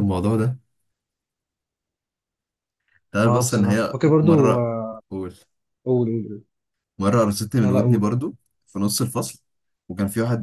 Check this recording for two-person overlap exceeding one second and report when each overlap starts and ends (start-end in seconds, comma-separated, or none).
3.2-4.7